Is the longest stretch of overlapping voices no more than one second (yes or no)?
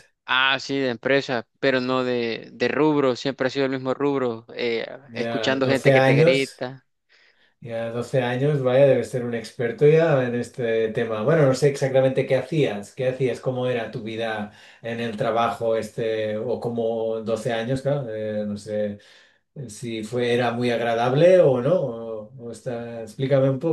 no